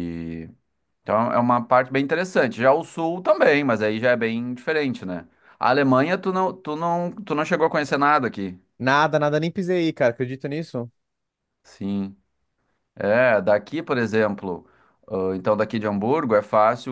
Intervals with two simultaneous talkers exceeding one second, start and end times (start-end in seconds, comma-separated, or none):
none